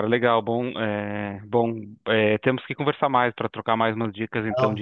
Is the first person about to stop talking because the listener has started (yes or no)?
no